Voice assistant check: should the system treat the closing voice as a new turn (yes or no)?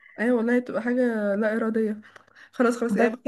no